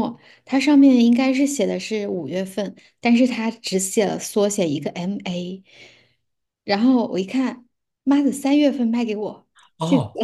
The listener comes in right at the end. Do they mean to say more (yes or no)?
yes